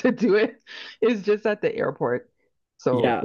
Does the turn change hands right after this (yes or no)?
yes